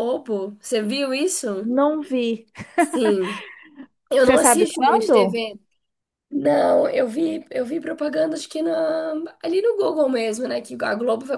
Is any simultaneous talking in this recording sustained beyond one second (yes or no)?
yes